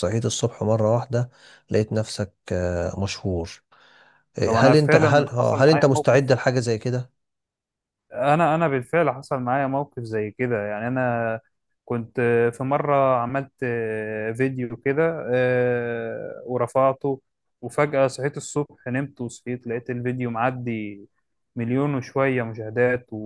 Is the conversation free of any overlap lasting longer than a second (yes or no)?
no